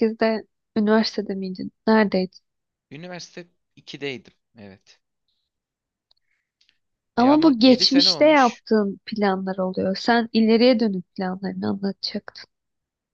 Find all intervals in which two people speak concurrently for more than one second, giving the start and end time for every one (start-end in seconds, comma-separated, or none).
7.2-8.6